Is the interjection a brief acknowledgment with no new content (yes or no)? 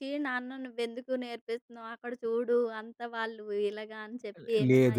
no